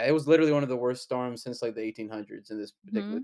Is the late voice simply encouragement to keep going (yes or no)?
no